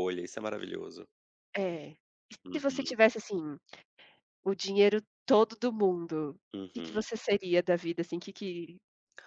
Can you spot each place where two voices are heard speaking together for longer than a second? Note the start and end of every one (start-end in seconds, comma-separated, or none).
none